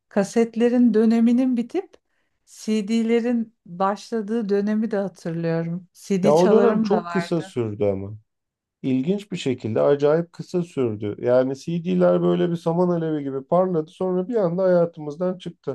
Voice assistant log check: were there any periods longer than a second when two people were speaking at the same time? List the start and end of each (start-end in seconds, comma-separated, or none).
6.2-7.6